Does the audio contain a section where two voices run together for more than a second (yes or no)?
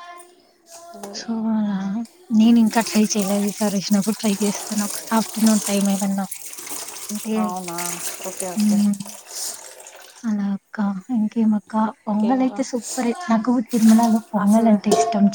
no